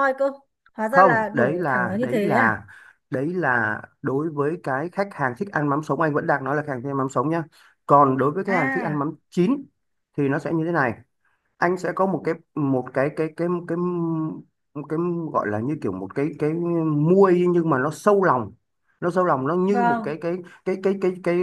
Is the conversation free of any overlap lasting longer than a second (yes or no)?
no